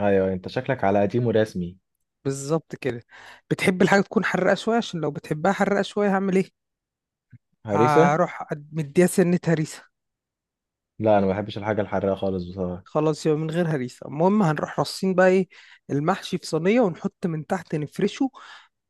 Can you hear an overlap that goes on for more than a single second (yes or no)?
no